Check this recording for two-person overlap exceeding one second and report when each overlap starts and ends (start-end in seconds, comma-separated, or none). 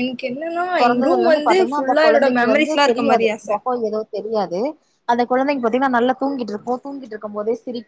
0.8-3.5